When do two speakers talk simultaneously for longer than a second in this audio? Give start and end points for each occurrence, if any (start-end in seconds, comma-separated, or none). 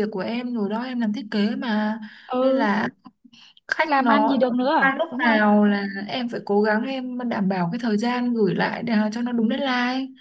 3.8-5.4